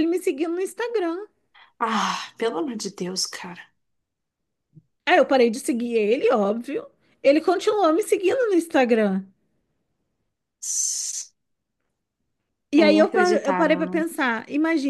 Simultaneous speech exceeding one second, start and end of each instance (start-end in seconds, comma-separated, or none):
12.8-14.0